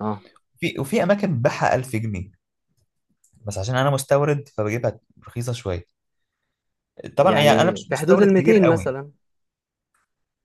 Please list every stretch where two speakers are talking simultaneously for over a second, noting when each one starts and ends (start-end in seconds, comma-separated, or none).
7.2-8.9